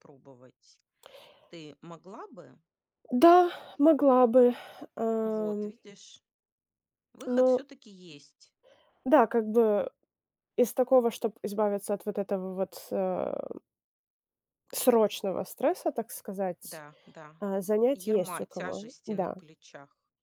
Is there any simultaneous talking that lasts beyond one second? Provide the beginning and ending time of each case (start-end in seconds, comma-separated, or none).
18.1-19.4